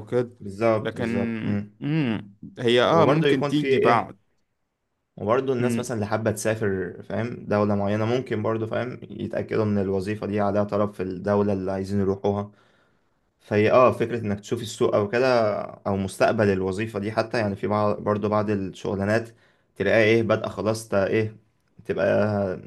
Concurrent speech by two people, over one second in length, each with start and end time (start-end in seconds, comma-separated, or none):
2.9-4.1